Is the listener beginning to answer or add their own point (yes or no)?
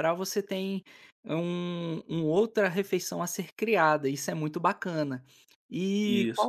no